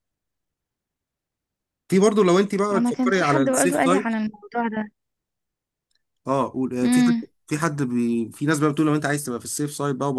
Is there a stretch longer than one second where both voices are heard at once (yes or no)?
yes